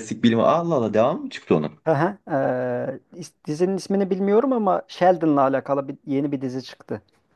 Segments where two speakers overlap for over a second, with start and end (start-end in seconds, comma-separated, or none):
none